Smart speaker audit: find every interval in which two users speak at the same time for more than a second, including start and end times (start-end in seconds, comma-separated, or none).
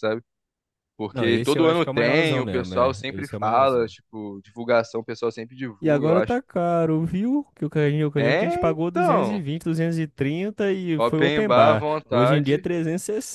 1.1-3.9, 8.2-9.4, 11.0-12.7